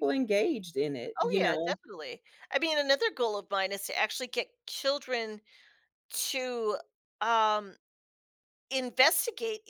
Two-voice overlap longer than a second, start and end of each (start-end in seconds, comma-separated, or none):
none